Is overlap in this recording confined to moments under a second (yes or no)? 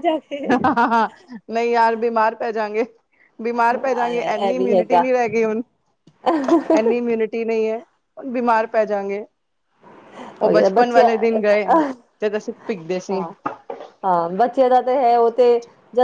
no